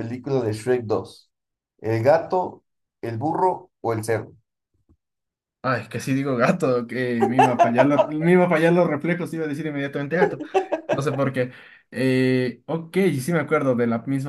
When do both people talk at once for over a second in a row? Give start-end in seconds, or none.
none